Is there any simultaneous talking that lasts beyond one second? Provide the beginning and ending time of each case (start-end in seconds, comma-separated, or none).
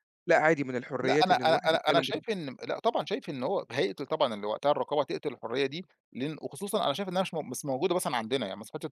1.0-2.4